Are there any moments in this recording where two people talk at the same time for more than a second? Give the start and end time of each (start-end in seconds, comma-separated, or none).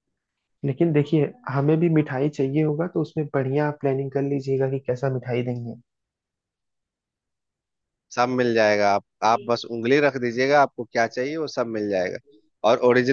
none